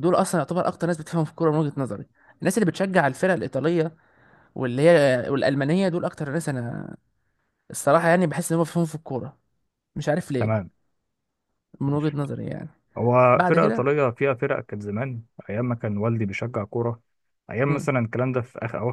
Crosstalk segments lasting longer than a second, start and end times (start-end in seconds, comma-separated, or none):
none